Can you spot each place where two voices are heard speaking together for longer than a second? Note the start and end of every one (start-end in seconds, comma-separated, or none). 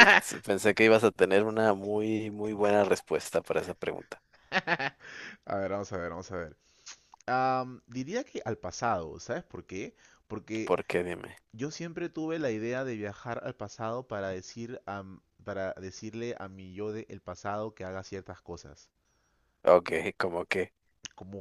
none